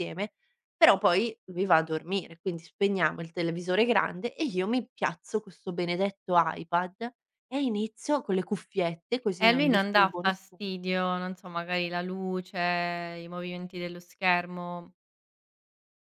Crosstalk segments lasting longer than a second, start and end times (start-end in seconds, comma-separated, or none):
9.4-10.7